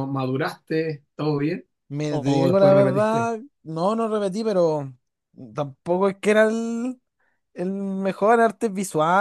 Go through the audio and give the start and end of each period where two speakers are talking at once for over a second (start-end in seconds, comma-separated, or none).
2.1-3.3